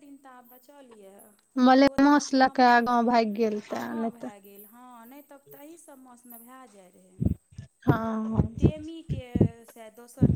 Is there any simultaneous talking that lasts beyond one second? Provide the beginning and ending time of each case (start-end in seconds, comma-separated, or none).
1.7-4.3